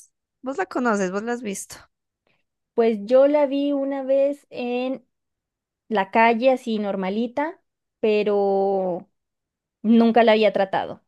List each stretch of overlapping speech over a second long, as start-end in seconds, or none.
none